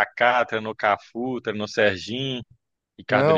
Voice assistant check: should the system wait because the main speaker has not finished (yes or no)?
no